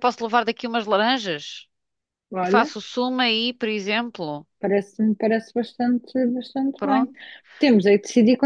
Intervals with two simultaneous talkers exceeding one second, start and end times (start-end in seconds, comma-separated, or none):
none